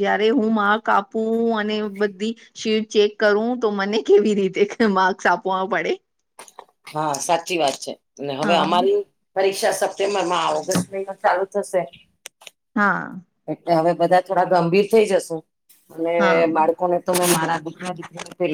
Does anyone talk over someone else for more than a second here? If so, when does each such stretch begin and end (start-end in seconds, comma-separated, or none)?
none